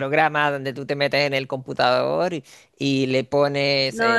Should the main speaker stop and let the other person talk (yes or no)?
yes